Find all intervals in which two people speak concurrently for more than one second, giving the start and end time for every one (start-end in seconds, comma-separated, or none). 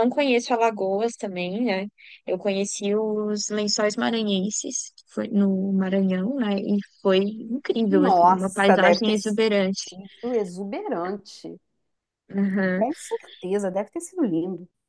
7.9-10.0